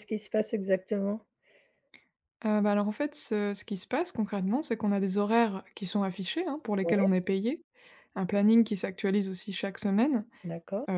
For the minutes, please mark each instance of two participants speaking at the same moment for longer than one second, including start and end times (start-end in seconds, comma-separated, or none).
none